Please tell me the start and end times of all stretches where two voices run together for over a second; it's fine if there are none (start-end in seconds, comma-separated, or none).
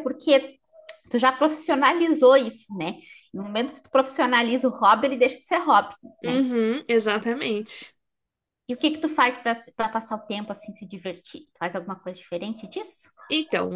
none